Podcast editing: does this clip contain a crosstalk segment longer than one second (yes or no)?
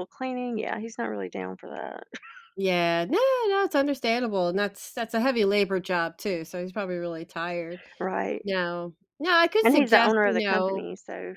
yes